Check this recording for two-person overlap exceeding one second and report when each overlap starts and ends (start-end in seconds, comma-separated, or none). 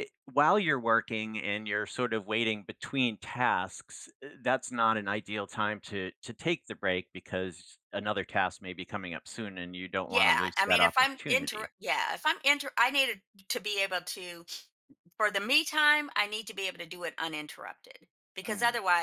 10.1-11.7